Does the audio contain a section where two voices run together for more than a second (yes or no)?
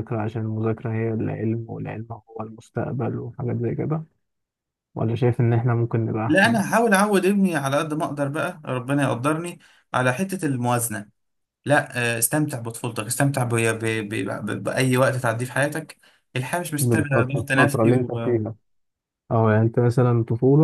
yes